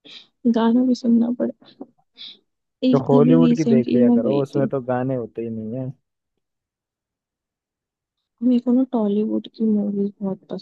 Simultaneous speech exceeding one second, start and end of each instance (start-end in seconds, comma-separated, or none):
2.9-4.7